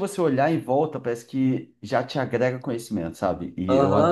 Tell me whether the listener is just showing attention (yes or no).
no